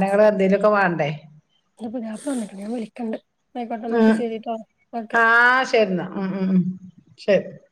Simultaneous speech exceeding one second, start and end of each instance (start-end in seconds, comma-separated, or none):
none